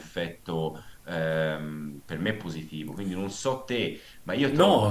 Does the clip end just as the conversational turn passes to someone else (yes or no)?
yes